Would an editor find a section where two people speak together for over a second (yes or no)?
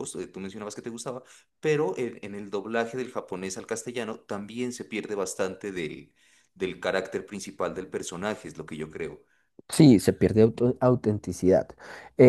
no